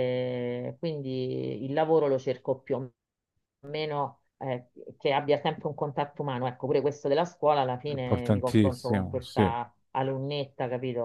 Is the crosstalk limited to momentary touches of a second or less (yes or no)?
no